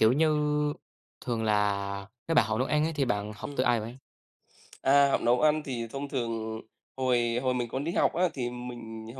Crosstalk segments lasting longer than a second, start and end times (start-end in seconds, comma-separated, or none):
none